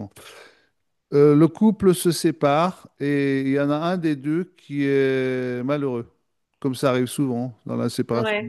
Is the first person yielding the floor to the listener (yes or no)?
no